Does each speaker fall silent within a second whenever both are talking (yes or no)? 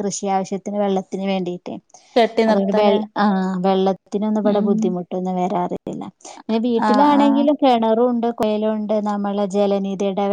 yes